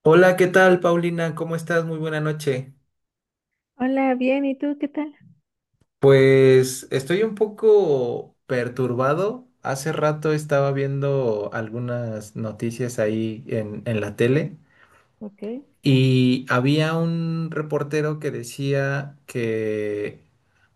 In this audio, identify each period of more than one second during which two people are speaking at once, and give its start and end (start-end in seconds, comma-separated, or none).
none